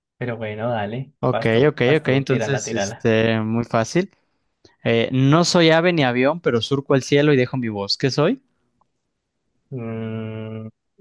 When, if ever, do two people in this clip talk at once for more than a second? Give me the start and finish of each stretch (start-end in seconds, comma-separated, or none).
1.2-3.1